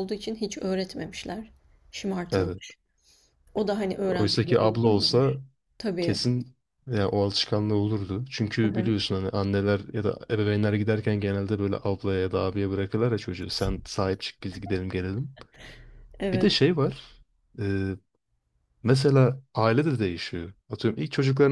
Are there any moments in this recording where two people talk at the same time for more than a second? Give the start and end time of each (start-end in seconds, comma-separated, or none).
4.1-5.3